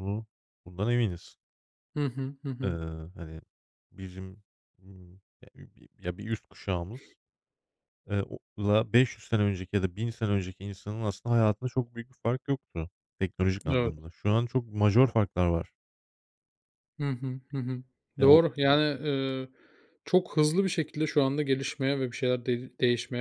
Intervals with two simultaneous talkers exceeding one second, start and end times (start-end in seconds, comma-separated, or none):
none